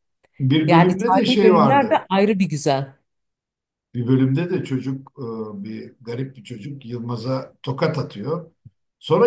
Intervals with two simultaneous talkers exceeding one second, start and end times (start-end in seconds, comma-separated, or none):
0.7-2.0